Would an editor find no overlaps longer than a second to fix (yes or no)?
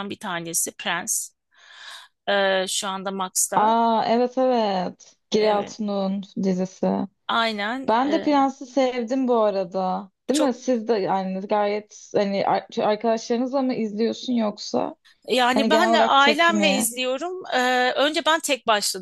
no